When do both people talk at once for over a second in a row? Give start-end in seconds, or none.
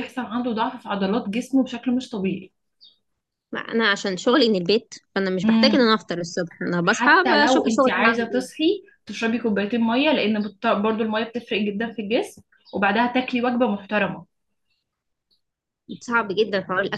6.8-8.5